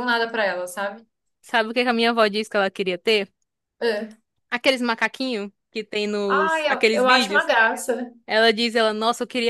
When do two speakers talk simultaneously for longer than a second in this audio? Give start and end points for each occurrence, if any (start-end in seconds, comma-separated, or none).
6.3-7.5